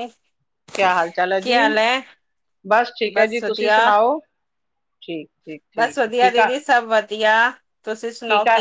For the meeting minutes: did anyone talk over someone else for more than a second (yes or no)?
no